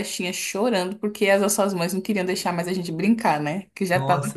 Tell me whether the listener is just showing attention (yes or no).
no